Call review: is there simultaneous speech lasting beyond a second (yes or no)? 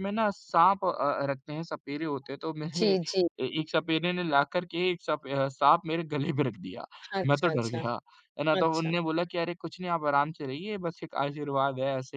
no